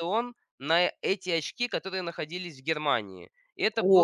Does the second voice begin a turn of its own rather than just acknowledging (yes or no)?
yes